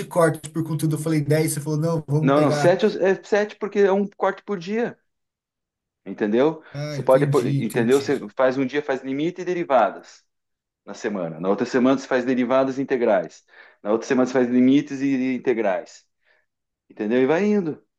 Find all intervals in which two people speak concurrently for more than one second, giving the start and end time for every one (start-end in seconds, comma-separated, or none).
6.7-8.3